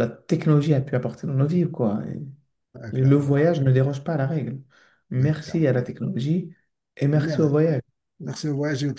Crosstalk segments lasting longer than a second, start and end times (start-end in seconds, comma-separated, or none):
none